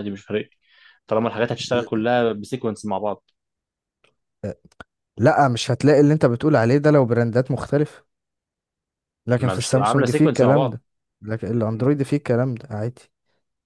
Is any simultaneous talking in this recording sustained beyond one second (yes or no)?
yes